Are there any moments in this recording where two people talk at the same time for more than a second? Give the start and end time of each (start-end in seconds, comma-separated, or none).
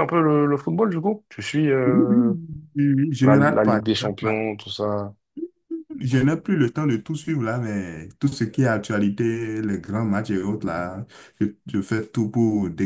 3.2-4.5